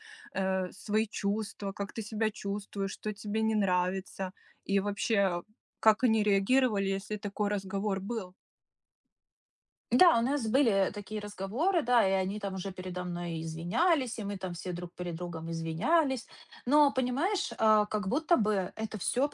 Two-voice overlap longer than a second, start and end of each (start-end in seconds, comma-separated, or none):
none